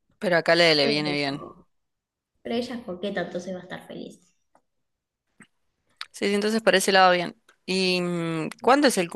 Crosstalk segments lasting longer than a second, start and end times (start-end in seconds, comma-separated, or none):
none